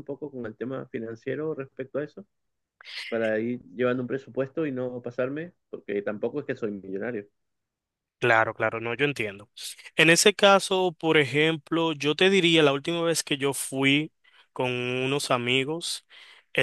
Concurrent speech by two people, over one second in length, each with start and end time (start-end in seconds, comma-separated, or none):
none